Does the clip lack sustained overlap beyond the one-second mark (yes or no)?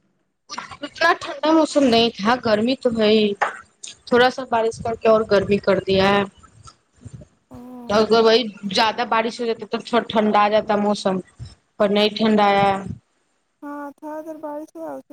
yes